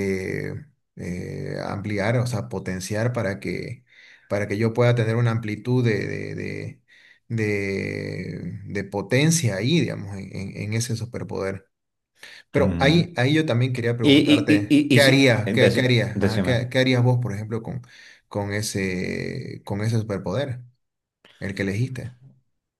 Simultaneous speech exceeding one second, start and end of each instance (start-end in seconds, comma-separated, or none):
14.0-16.6